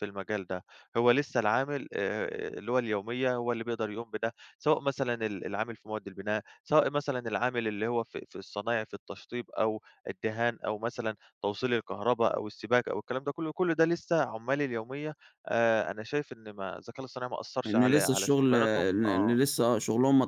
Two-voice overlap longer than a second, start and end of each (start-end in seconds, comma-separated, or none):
17.6-19.4